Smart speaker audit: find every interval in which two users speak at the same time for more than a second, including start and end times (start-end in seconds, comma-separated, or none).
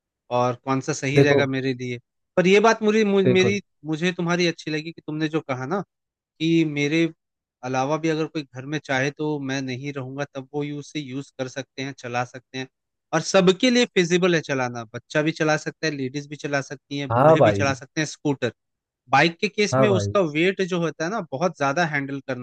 none